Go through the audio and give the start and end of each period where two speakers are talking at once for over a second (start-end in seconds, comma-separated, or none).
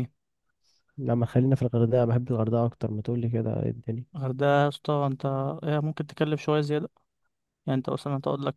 none